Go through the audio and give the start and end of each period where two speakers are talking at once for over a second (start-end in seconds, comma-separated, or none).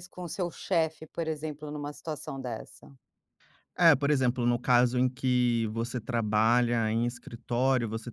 none